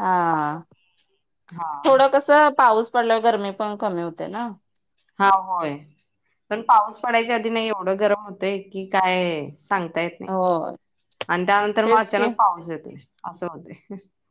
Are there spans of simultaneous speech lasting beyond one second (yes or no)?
no